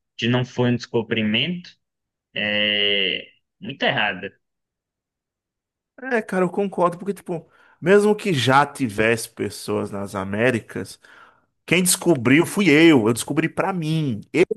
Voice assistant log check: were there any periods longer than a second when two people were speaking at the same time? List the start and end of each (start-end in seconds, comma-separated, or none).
none